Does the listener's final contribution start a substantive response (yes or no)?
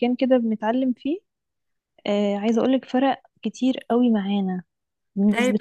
no